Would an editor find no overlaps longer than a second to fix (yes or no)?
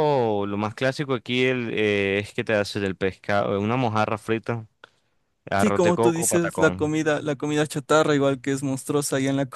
no